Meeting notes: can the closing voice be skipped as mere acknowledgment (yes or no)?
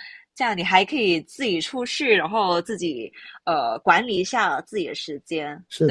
no